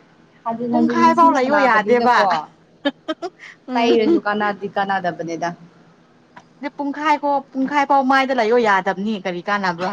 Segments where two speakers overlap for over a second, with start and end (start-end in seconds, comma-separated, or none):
0.7-2.2